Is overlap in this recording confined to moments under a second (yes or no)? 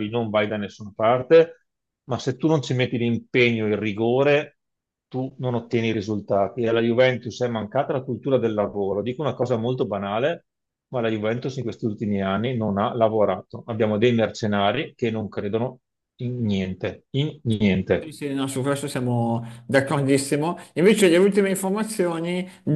yes